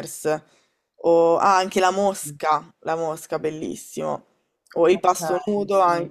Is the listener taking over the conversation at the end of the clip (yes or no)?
no